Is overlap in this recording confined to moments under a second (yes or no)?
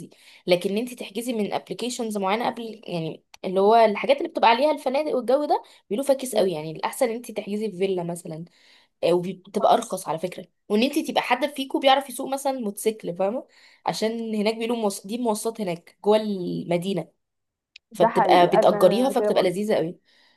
no